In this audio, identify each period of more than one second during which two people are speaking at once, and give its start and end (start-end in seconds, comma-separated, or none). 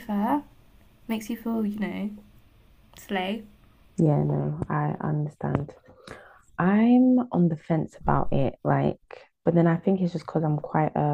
none